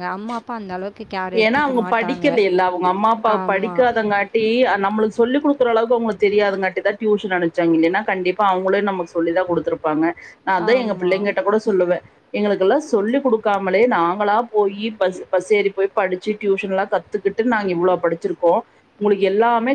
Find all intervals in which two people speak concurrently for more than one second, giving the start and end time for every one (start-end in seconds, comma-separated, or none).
none